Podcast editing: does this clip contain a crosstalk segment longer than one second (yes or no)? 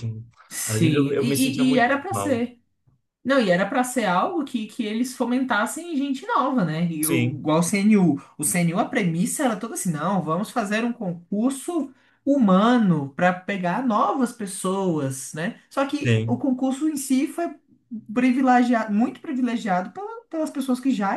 yes